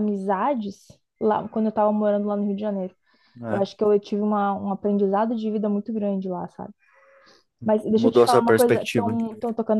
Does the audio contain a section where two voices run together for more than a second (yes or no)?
yes